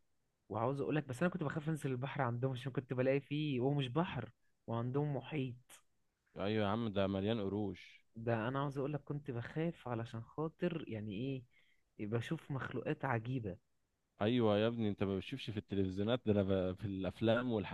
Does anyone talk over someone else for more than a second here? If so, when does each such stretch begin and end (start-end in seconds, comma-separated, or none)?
none